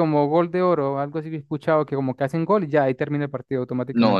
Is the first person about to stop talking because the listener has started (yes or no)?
yes